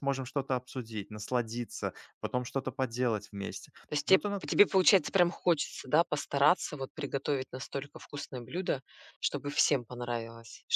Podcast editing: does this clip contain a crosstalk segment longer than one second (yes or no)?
no